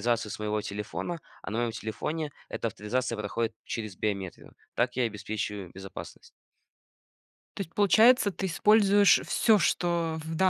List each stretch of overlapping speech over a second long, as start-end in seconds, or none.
none